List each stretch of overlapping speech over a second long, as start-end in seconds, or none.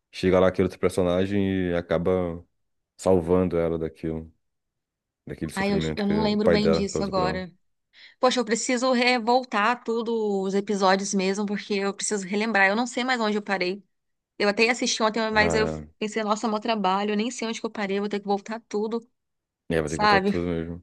5.5-7.5